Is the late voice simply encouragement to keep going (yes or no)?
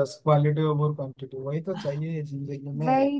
yes